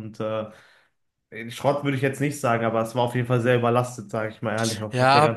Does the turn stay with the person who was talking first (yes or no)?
no